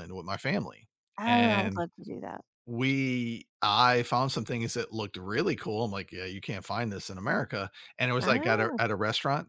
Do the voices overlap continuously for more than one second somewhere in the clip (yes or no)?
no